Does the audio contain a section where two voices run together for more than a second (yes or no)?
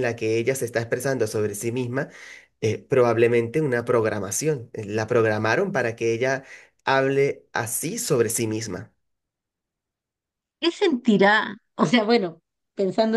no